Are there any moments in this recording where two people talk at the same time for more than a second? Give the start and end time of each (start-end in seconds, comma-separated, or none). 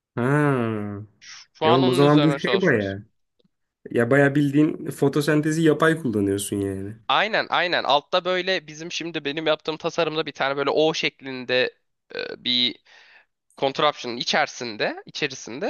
1.6-3.0